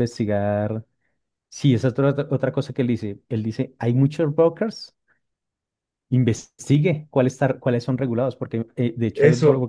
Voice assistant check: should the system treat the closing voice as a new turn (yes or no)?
no